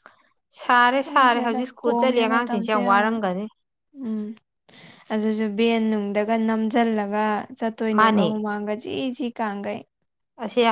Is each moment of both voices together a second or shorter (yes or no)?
no